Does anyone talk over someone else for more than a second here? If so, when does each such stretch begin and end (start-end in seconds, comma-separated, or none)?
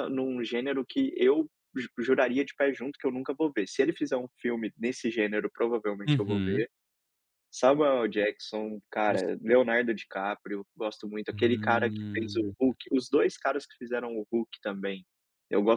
11.3-12.5